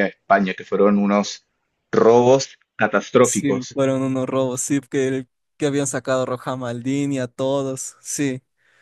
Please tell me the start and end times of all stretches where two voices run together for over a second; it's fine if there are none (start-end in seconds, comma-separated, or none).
none